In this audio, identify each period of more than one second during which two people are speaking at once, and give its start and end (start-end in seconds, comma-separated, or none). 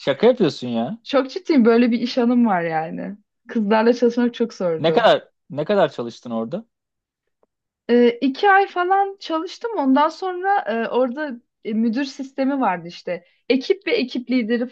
none